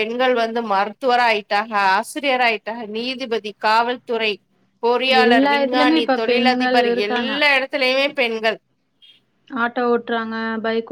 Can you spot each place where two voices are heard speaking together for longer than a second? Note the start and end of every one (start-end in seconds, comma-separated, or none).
5.2-7.3